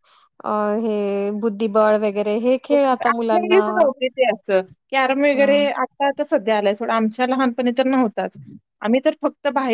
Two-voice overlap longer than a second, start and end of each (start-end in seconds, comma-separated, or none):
none